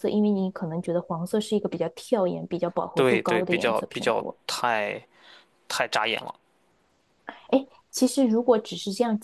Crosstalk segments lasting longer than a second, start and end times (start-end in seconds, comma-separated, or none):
2.9-4.4